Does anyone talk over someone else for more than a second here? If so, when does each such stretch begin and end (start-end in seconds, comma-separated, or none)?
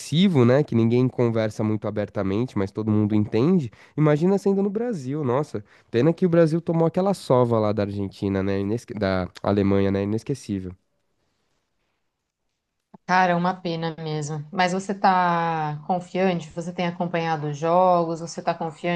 none